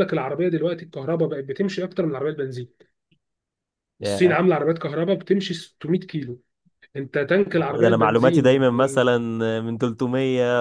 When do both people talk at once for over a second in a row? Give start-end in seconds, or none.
7.5-9.2